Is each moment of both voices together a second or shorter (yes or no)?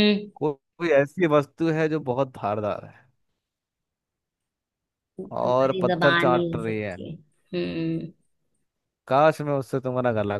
no